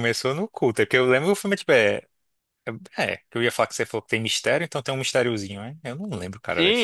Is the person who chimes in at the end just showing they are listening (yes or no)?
no